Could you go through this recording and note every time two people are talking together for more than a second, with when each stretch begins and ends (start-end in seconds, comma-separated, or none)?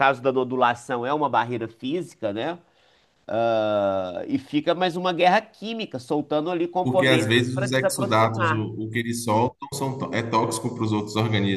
6.8-8.7